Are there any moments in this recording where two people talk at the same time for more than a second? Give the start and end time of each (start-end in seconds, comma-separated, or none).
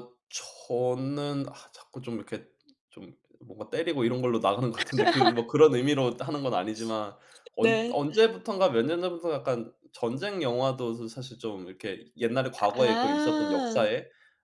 12.6-13.8